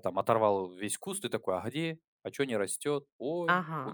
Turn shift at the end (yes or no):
yes